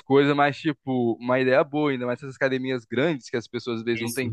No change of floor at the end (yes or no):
yes